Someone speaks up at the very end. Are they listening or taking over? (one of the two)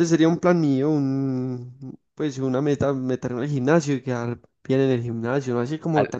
listening